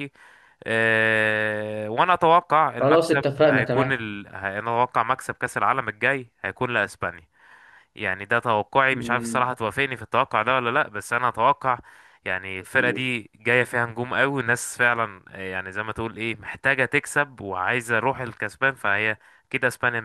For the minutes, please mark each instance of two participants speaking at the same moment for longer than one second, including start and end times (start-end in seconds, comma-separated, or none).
2.8-4.0